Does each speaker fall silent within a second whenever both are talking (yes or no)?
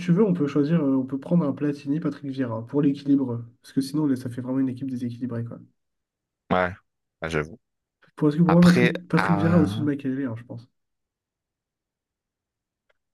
no